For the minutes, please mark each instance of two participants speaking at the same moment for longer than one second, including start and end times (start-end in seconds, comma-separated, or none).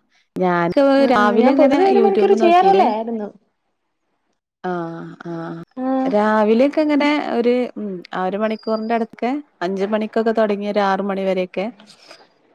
1.1-2.9